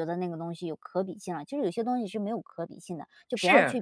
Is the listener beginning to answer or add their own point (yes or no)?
yes